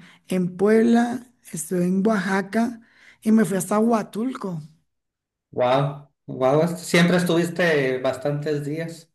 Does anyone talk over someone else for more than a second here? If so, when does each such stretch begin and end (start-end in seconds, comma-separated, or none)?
none